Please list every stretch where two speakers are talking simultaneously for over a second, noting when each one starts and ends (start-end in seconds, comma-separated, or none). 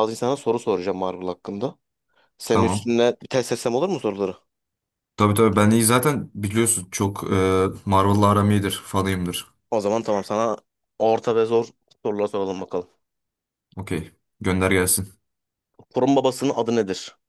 none